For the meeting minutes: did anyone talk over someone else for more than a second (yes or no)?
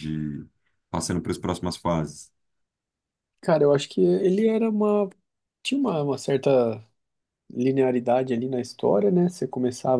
no